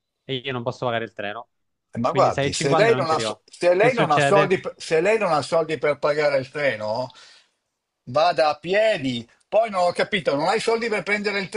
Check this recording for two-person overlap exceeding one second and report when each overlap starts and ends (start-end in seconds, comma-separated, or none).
2.0-4.5